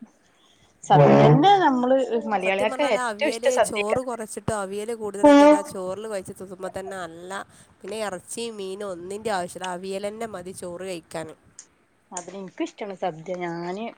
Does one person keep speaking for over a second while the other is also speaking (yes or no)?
yes